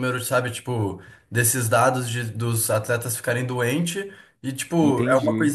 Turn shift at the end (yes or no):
no